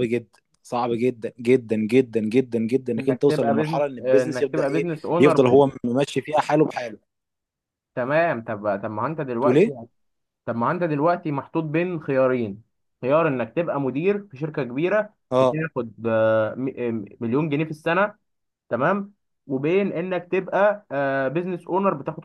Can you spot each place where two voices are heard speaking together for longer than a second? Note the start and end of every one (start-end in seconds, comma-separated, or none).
3.0-5.6